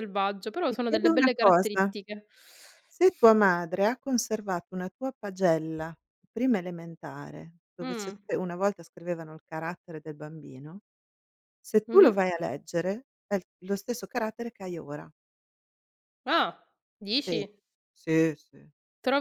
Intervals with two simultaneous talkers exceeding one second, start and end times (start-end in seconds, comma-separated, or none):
0.7-1.9